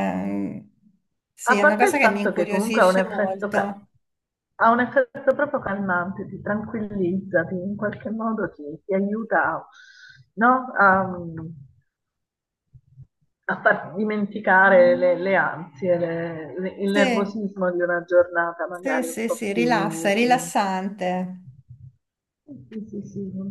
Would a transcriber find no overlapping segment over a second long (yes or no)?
no